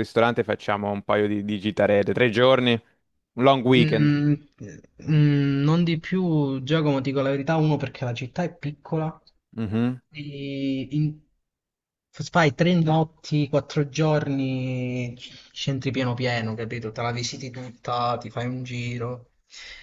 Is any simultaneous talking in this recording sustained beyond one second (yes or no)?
no